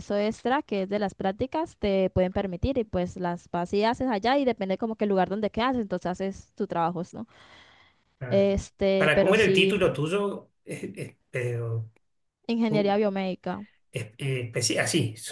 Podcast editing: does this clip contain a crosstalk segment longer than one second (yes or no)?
yes